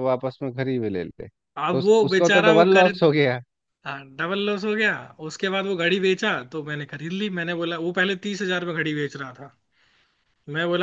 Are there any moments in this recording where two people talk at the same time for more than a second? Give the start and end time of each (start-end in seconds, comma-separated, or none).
1.6-2.9